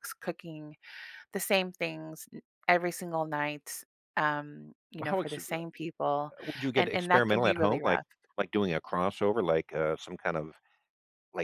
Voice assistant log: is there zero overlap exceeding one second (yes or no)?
no